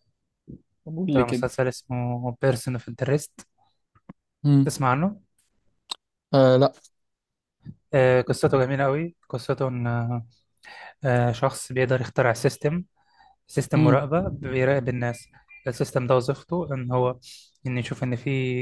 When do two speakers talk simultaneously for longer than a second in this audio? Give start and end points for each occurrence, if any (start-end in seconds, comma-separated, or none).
none